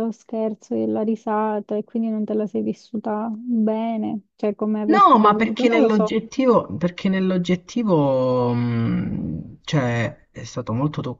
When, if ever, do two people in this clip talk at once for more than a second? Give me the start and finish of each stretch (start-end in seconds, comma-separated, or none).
4.8-6.1